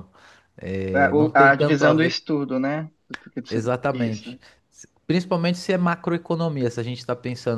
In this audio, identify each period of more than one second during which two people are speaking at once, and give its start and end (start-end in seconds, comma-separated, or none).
0.9-2.1